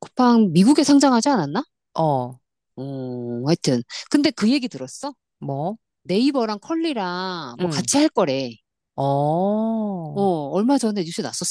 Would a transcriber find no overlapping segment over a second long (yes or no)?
yes